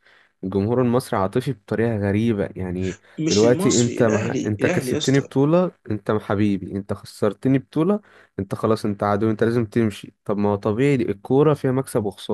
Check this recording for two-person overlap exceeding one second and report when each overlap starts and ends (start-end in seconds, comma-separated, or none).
3.2-5.3